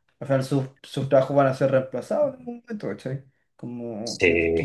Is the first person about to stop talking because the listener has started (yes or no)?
no